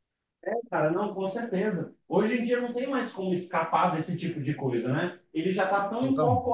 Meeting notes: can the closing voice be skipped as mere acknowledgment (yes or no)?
yes